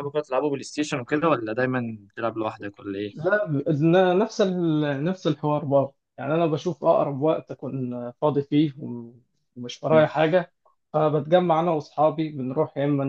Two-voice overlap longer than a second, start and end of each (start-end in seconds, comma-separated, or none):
none